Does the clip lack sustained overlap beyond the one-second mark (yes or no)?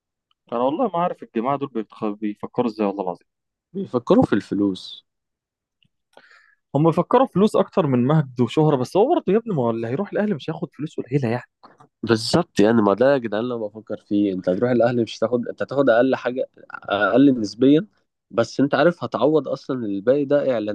yes